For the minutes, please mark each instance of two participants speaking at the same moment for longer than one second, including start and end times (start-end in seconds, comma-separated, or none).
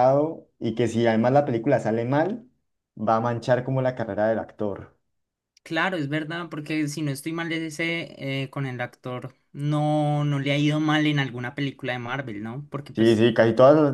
none